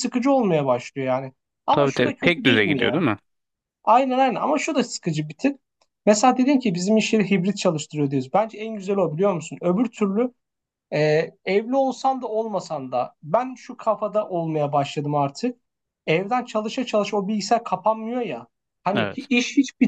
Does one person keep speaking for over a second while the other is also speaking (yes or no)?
yes